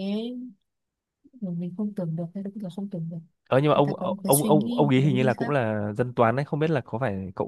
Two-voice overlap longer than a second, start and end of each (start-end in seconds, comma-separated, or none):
3.8-5.5